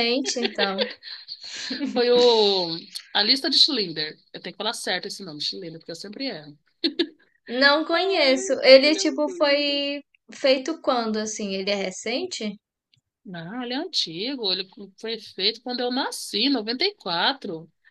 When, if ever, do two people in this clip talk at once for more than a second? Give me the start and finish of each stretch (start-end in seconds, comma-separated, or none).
7.9-9.9